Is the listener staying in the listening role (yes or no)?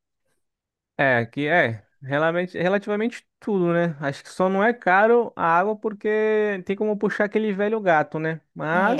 yes